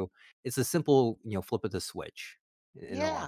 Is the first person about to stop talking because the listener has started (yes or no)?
yes